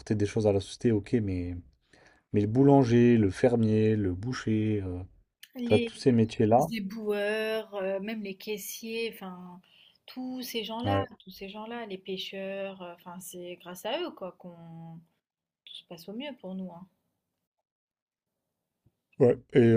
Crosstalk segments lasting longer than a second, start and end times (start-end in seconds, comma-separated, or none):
none